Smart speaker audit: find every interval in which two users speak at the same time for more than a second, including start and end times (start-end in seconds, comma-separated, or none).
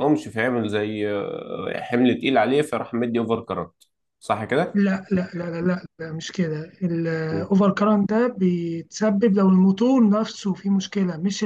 none